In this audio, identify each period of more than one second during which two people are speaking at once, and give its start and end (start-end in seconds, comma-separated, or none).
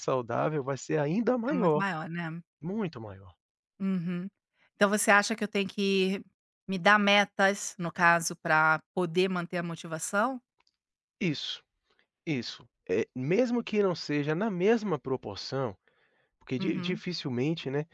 none